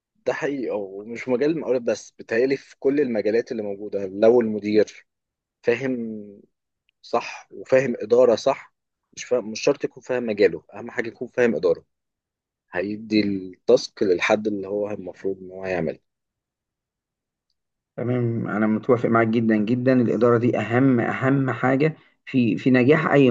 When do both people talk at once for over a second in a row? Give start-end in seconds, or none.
none